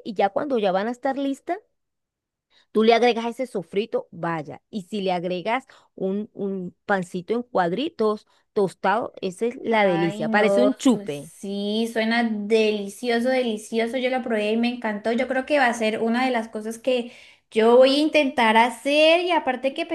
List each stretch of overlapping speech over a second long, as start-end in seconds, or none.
9.7-11.3